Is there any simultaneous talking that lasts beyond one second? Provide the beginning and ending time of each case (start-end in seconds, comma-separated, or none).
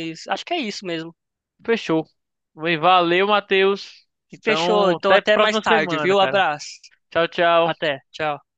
4.4-6.4